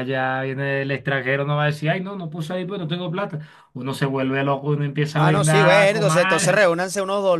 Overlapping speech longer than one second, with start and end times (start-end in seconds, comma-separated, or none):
5.1-6.7